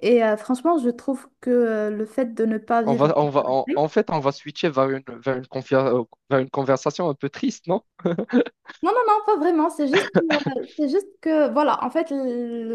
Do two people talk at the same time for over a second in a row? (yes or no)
no